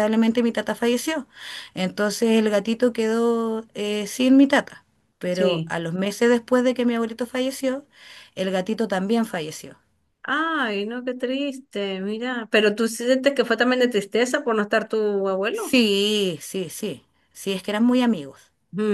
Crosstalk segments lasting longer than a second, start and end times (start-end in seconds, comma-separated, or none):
none